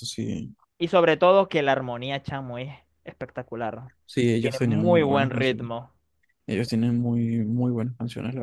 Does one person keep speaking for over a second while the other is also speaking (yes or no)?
yes